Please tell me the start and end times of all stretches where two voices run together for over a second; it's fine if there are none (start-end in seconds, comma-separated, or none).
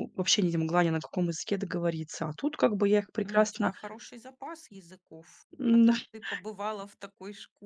none